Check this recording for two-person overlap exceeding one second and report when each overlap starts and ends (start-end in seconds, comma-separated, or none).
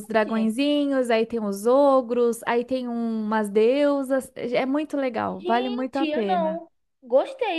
5.4-6.6